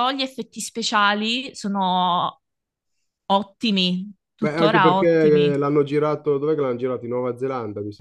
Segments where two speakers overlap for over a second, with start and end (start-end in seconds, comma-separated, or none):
4.4-5.7